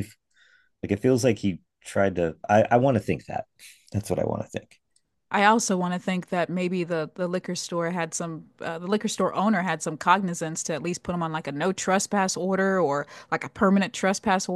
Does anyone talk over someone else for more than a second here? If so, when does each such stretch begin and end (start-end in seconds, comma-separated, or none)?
none